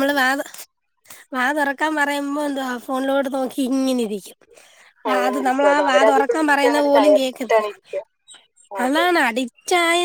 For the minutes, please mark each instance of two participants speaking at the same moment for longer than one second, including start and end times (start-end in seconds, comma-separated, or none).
5.1-7.7